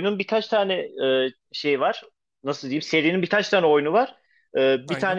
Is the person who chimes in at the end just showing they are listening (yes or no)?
yes